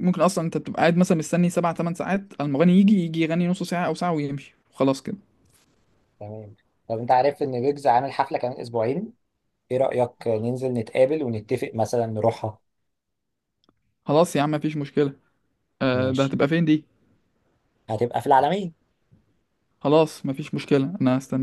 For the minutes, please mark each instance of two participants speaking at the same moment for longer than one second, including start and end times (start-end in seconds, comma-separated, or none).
none